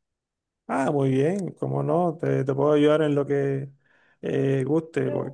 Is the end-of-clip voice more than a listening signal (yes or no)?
no